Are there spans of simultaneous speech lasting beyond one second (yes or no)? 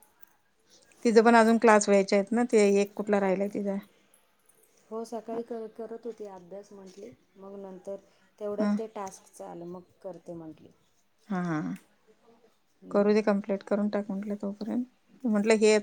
no